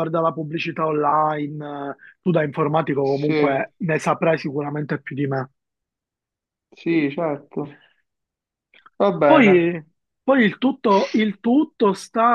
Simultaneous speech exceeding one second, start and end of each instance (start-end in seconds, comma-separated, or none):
none